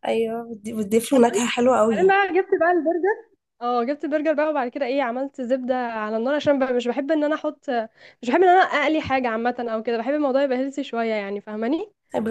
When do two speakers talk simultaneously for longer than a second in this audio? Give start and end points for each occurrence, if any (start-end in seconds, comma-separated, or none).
none